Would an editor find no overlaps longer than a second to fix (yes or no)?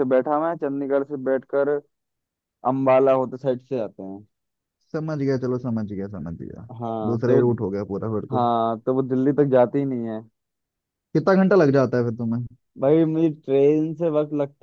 yes